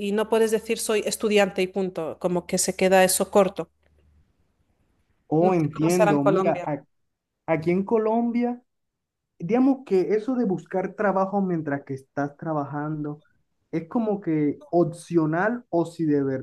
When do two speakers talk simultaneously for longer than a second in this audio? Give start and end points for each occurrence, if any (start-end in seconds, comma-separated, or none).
5.4-6.7